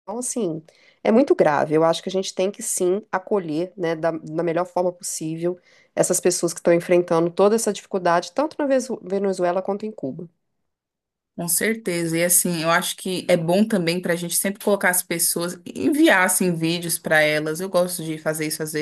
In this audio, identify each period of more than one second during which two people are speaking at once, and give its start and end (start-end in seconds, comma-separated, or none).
none